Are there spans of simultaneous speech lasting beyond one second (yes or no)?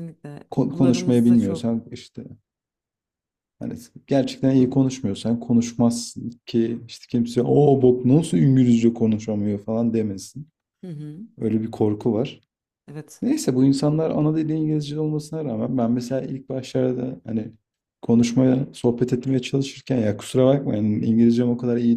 yes